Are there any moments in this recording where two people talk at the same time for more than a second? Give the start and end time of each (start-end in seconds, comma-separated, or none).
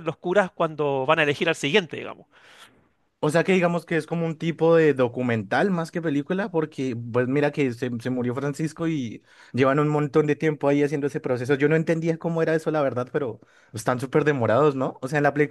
none